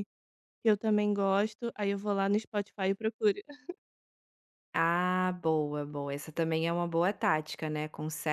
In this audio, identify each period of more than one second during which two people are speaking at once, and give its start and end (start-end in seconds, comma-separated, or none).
none